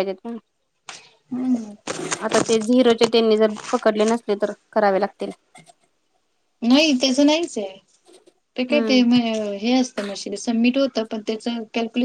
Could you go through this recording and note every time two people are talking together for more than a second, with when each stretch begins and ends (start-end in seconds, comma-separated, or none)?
none